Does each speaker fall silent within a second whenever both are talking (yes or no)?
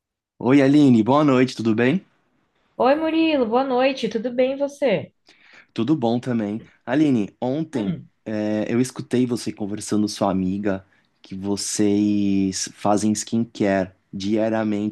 yes